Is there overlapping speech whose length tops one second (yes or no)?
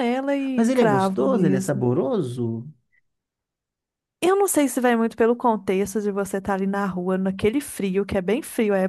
yes